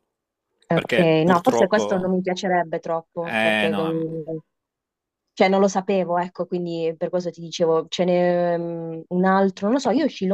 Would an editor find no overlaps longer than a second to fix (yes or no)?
no